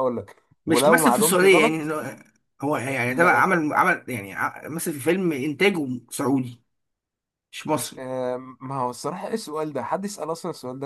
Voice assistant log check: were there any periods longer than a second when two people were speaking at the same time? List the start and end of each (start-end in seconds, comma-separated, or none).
0.7-1.9